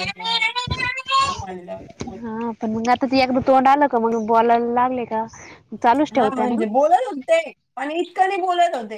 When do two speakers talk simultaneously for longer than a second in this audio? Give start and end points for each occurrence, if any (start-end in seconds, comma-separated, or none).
none